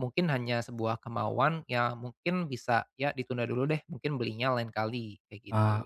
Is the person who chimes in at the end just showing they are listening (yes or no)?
no